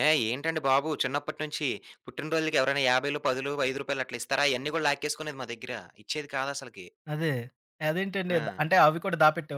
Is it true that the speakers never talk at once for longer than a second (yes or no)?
yes